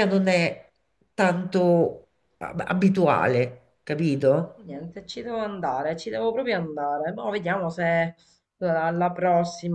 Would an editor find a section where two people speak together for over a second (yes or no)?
no